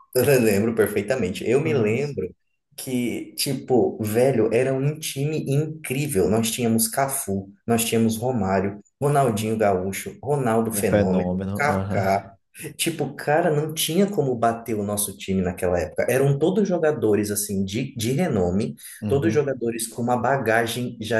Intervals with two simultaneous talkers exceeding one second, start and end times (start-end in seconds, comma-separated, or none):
10.7-12.1